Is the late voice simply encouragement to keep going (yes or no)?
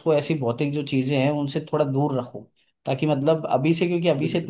yes